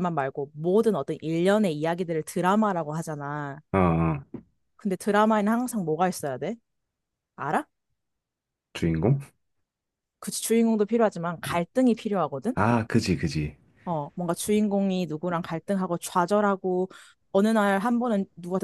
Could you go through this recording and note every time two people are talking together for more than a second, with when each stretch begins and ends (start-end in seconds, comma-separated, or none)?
none